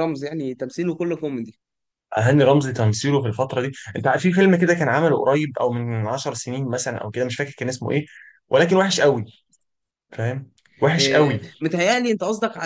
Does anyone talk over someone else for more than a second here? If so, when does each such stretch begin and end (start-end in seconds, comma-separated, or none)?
none